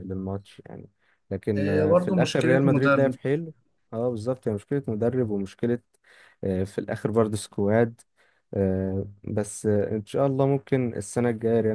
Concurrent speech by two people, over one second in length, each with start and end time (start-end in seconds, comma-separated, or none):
1.6-3.2